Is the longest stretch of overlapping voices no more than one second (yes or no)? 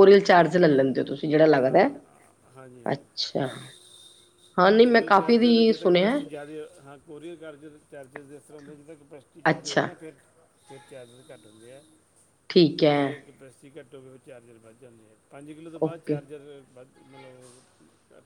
no